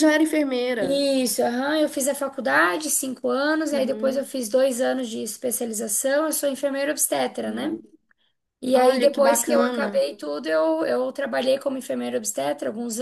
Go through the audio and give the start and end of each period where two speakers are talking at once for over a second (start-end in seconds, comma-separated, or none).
8.7-10.1